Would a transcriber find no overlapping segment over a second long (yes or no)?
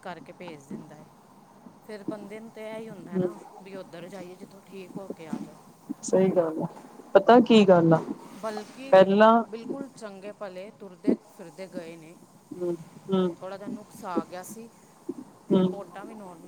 yes